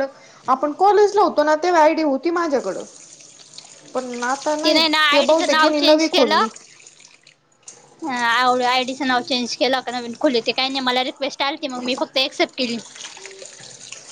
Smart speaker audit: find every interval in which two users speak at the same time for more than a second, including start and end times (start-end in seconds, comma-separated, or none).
4.6-6.5